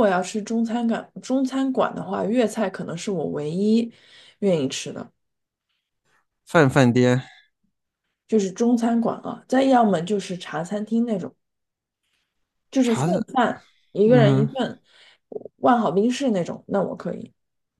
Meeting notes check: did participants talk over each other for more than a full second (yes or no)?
no